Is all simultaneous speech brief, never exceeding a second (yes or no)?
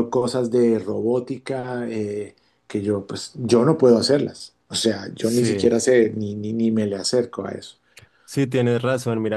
yes